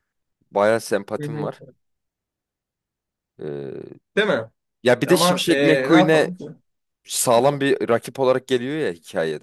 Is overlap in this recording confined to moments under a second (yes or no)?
no